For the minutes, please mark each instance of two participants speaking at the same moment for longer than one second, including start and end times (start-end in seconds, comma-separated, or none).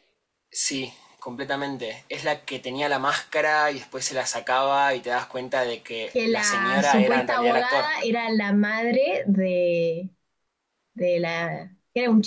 6.1-7.9